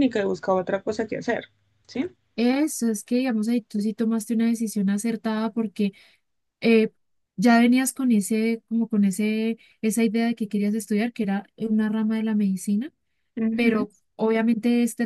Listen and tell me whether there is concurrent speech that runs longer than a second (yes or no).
no